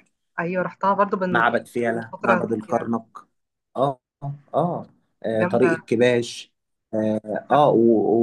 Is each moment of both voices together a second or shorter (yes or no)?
no